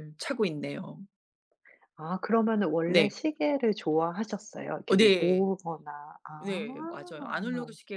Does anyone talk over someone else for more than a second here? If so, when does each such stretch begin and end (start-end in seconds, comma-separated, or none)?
none